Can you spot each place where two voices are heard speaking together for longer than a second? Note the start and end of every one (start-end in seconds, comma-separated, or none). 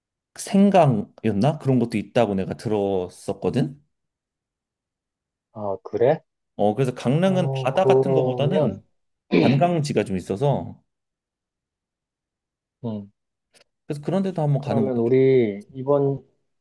7.2-8.8